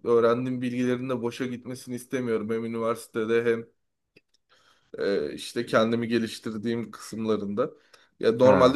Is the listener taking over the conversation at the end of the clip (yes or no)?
no